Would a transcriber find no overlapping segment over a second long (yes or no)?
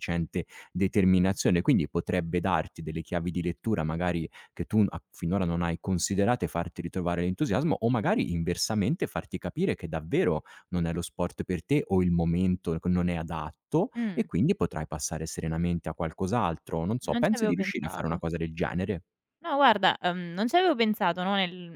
no